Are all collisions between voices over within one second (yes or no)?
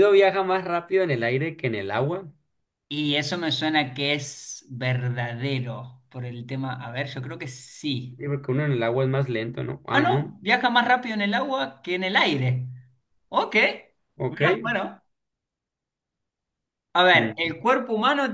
yes